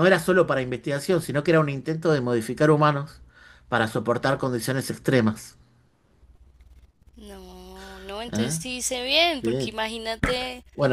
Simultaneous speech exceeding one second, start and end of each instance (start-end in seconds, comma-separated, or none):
none